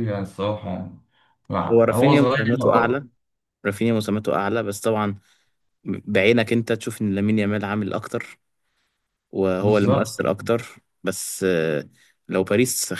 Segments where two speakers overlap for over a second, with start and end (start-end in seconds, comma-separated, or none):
1.7-3.1